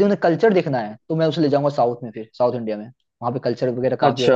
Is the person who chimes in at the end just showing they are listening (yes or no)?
yes